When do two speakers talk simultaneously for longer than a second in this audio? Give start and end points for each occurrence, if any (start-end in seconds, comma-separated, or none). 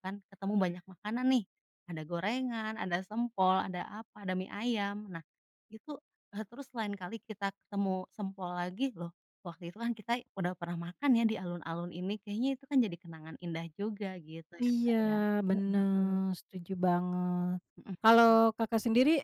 none